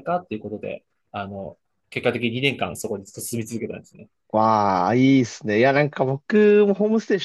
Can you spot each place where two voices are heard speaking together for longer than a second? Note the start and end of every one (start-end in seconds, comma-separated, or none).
none